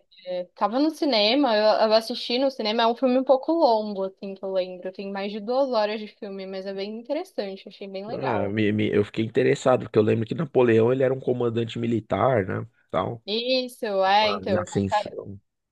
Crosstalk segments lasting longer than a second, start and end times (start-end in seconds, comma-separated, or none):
none